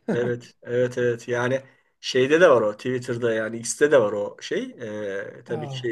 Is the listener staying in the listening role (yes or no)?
yes